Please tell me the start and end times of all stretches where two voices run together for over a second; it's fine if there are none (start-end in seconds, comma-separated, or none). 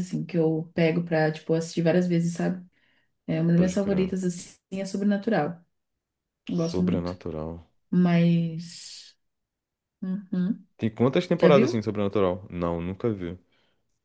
none